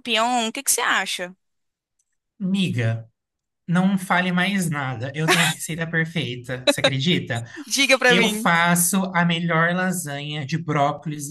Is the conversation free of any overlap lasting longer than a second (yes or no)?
yes